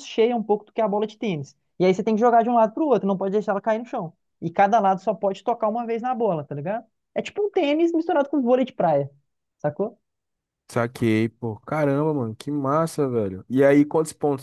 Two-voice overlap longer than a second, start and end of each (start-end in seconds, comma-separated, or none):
none